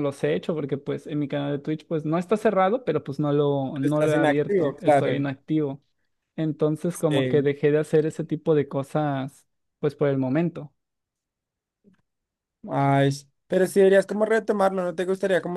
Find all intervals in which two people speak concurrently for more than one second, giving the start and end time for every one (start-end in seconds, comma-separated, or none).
3.7-5.2